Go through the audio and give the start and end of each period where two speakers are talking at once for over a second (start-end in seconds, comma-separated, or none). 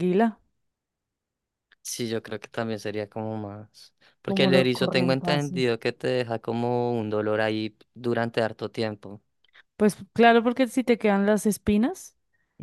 4.2-5.5